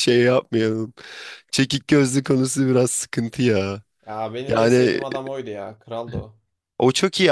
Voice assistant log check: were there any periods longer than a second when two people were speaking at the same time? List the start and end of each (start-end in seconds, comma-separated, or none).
none